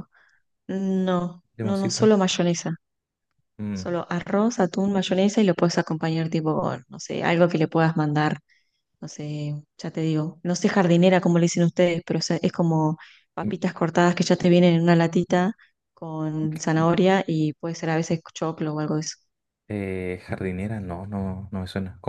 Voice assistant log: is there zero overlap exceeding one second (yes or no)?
yes